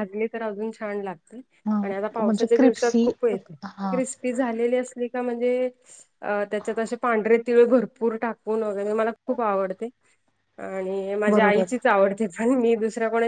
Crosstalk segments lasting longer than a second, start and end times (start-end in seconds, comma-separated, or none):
1.8-3.1